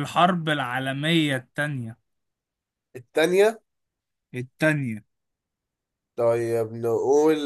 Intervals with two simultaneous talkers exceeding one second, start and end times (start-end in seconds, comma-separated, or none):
none